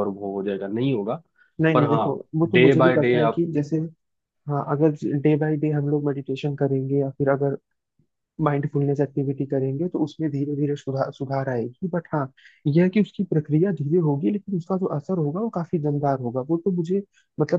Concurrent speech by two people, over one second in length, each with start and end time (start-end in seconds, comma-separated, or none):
1.7-3.4